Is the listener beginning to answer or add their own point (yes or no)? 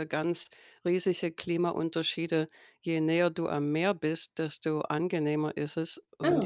no